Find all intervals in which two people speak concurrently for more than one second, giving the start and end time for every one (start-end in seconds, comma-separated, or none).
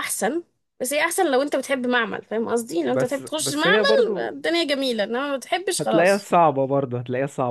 2.9-4.3